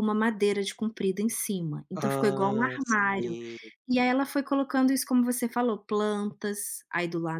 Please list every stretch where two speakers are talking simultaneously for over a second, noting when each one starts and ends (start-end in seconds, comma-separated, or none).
1.9-3.4